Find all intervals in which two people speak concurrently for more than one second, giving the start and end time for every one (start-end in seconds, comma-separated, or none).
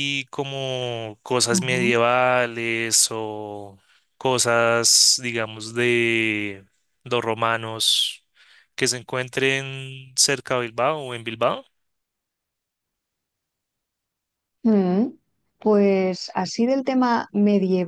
none